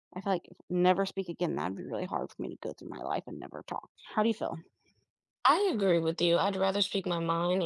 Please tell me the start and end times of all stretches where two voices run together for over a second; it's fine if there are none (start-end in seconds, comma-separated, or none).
none